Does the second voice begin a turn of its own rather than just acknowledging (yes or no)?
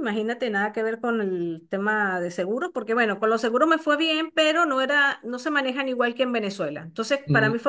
no